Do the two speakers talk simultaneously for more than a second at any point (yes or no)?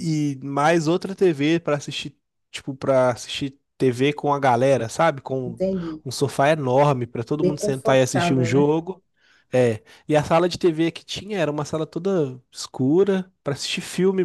yes